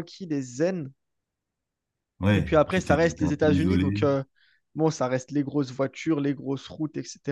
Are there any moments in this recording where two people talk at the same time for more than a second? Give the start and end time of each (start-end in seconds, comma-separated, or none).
2.3-4.0